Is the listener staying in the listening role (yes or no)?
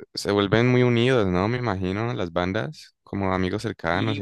no